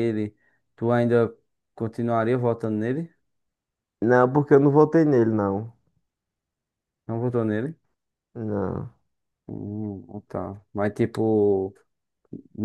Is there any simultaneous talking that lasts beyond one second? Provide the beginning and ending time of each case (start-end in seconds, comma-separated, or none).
none